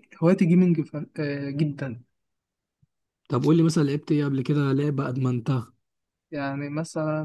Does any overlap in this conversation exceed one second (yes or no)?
no